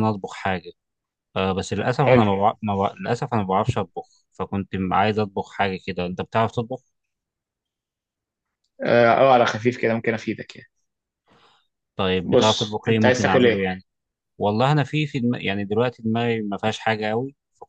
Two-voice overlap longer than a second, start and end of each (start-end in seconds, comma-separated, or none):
12.2-13.6